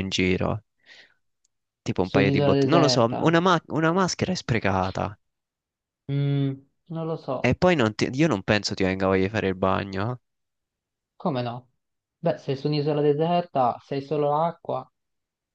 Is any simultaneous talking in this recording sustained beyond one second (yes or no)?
yes